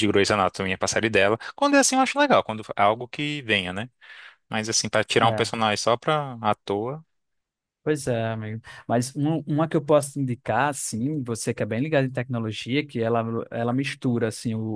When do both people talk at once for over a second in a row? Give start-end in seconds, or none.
none